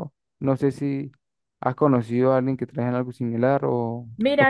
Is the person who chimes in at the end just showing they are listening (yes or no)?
no